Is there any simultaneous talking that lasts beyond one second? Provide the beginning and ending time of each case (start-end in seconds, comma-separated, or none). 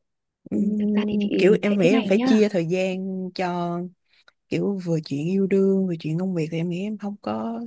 0.5-2.4